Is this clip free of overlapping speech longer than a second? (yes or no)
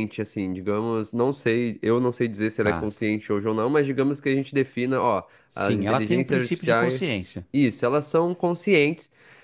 no